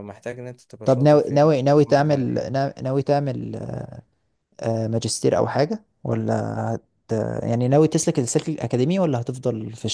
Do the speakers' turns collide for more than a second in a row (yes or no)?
yes